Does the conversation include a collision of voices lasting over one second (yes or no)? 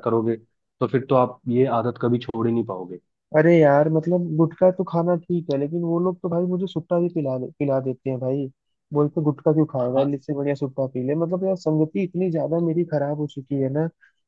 no